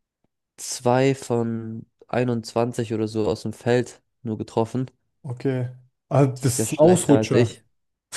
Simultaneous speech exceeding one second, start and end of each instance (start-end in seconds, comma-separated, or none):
6.3-7.5